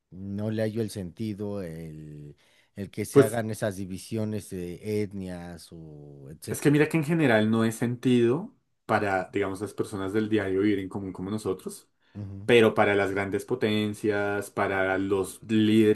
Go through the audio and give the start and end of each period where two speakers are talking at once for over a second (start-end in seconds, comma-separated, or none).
none